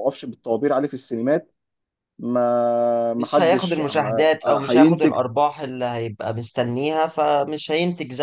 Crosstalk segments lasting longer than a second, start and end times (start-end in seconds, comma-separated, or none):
3.2-5.1